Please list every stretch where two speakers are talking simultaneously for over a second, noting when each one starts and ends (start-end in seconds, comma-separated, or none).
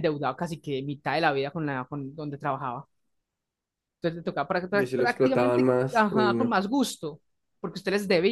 4.7-6.6